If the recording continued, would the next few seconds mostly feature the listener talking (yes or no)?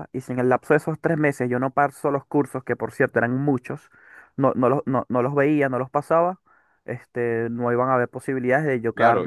yes